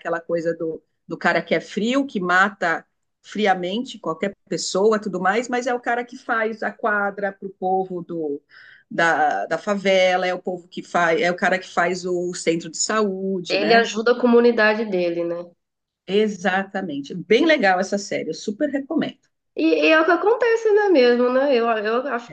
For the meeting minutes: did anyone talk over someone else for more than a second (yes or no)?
no